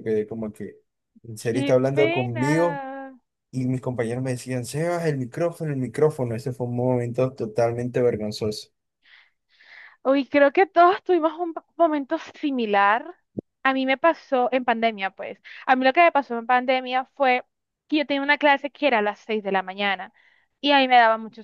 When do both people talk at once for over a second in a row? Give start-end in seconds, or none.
1.4-2.8